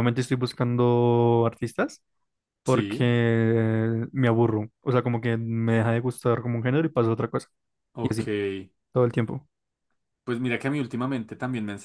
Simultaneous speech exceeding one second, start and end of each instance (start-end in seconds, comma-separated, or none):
none